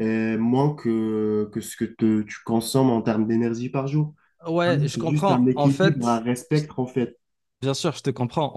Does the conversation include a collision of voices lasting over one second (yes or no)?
yes